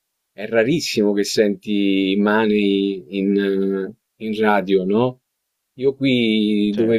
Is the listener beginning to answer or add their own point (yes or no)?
no